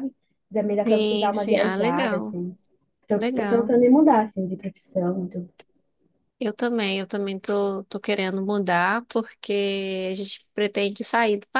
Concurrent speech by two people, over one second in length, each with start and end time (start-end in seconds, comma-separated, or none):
0.8-2.4